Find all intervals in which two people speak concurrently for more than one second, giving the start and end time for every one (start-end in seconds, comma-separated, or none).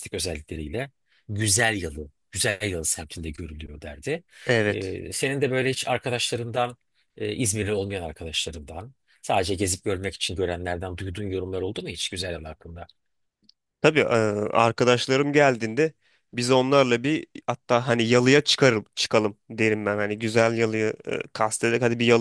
none